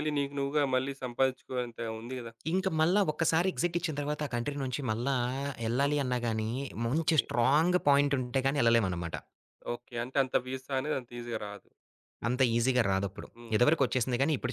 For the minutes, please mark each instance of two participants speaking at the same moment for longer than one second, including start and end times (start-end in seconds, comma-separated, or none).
none